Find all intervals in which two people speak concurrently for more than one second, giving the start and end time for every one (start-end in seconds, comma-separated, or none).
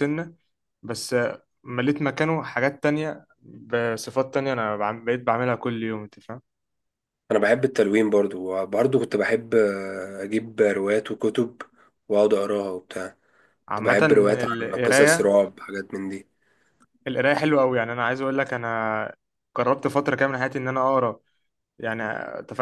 13.7-15.3